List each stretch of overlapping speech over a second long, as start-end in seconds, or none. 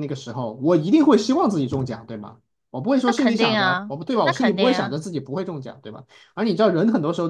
3.0-5.0